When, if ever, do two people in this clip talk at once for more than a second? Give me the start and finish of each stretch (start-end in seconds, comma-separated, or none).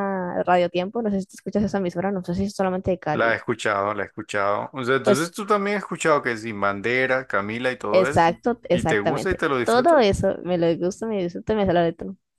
7.9-10.0